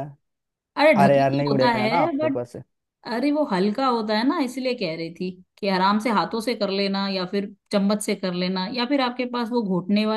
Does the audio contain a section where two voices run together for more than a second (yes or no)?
yes